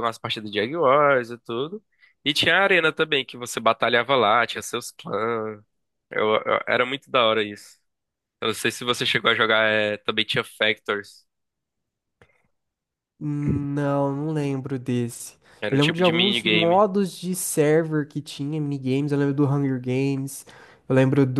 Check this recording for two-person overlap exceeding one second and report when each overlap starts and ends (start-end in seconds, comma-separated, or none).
15.6-16.8